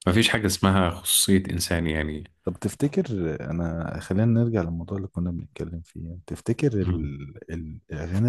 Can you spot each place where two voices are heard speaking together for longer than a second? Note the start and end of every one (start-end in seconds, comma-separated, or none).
none